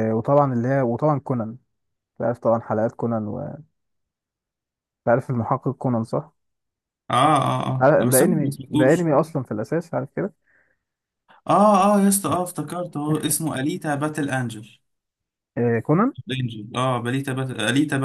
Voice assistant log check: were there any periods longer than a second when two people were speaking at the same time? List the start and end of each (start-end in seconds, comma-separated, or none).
7.8-9.1